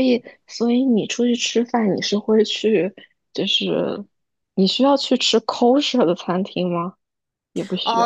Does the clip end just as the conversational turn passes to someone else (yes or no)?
yes